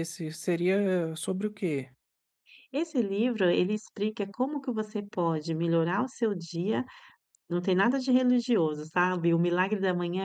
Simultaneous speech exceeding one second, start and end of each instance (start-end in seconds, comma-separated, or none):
none